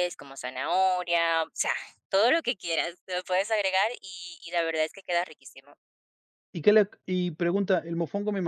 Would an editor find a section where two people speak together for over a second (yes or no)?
no